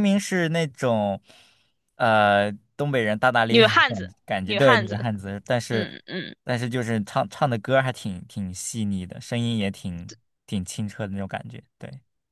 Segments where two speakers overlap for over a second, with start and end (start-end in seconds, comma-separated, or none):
3.5-5.1